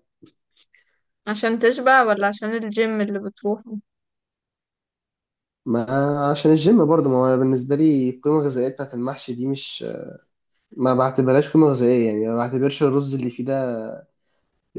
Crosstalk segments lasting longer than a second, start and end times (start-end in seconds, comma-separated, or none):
none